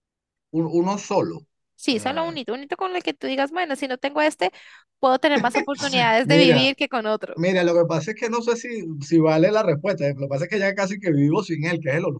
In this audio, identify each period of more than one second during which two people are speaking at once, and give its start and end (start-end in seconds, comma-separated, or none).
none